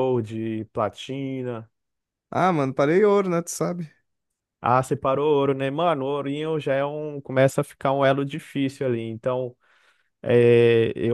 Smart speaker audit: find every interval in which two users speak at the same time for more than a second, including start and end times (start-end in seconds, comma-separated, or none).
none